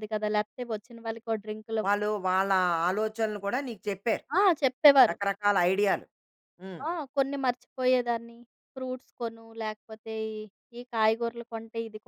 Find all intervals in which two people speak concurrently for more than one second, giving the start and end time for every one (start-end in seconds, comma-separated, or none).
none